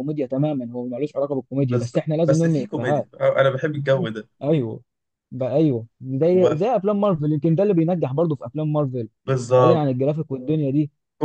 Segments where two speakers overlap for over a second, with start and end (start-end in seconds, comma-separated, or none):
1.7-3.1